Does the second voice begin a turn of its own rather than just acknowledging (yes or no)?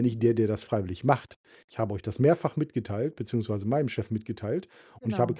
no